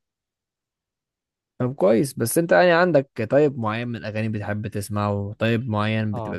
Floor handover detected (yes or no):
no